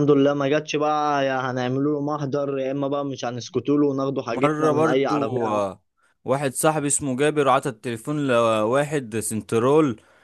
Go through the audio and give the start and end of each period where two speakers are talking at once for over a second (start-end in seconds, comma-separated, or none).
4.3-5.7